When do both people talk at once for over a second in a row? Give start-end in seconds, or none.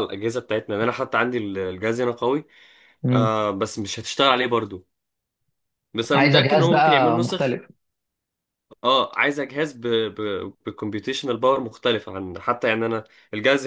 6.1-7.6